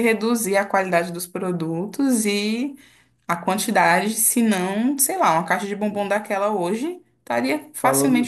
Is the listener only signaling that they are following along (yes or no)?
no